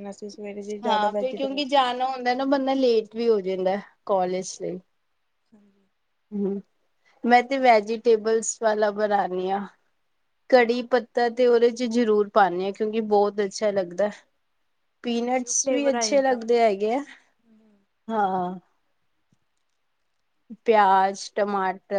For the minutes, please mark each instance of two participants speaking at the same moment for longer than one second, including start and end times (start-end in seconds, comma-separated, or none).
15.2-16.6